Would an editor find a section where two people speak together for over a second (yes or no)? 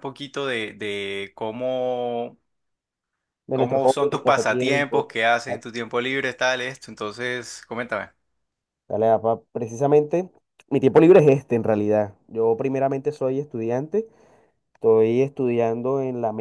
yes